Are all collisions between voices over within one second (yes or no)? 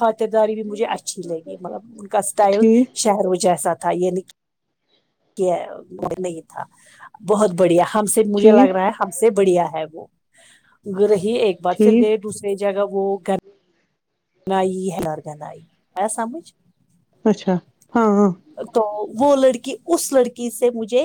yes